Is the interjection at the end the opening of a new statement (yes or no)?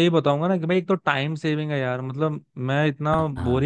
no